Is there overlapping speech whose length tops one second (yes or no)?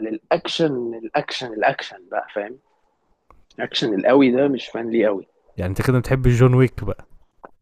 no